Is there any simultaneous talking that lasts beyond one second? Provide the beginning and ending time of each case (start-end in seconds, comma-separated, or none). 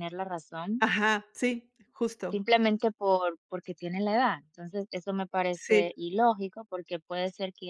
none